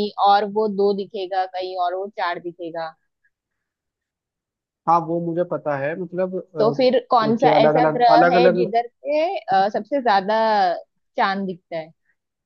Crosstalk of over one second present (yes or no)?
yes